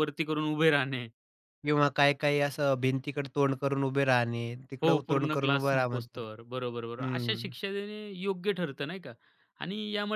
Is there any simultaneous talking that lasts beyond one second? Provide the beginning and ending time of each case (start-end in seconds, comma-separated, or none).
4.8-6.2